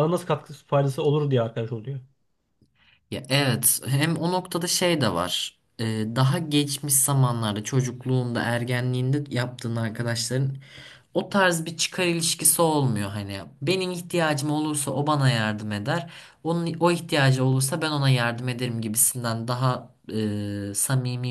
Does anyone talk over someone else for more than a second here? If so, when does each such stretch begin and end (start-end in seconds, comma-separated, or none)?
none